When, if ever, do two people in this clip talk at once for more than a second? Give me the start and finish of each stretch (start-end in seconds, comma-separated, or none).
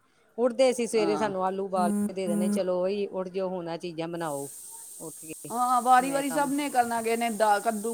none